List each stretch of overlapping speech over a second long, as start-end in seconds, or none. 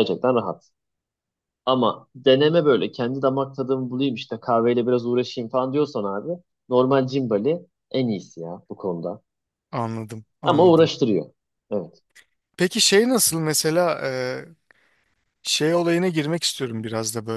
none